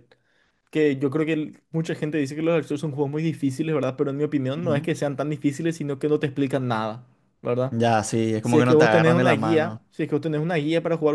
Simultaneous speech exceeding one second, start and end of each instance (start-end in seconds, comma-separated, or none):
8.4-9.8